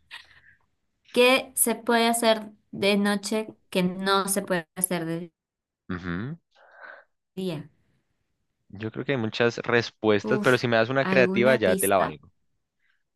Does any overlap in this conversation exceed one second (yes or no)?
yes